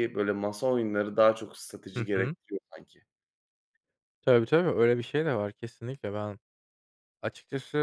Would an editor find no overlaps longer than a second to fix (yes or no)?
yes